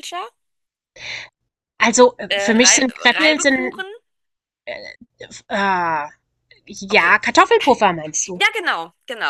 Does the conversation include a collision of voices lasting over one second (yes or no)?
yes